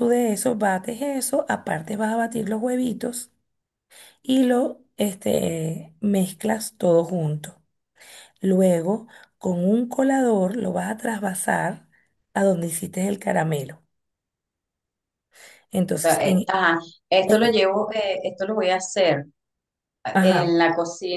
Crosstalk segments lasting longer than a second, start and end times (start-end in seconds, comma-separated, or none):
none